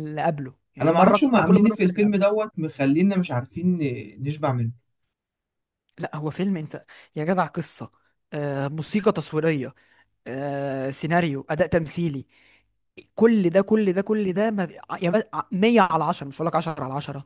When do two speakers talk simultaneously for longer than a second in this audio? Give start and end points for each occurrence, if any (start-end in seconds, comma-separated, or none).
0.8-2.2